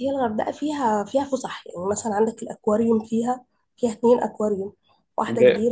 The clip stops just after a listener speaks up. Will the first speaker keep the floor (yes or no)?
no